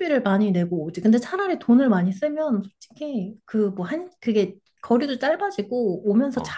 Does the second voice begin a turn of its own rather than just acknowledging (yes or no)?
no